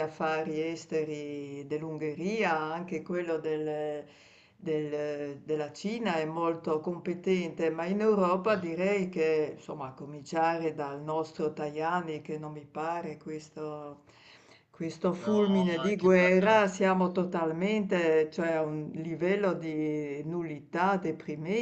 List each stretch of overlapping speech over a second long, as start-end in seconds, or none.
15.2-16.7